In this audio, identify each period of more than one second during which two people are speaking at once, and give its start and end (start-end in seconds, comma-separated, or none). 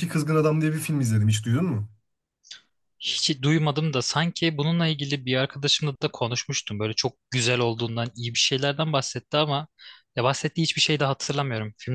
none